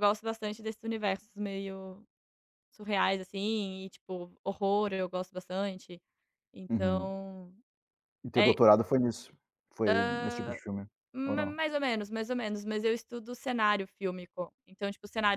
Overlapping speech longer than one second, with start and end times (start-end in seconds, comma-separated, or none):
none